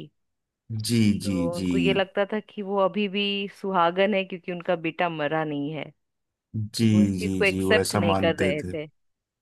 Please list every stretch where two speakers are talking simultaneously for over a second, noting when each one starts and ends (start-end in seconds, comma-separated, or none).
6.8-8.7